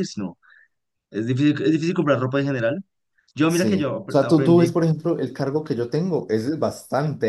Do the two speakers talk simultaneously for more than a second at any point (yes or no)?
yes